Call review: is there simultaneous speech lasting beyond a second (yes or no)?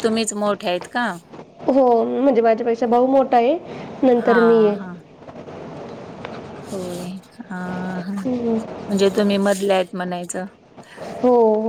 no